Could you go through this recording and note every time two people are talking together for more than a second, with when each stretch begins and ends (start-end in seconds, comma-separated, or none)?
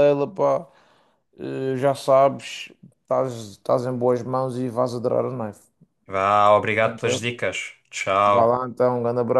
none